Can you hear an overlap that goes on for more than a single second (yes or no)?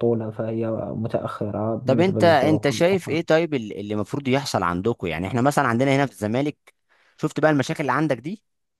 yes